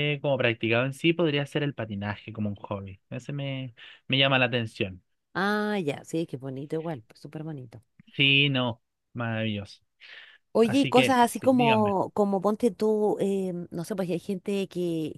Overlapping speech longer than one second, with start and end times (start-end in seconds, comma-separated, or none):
10.6-11.9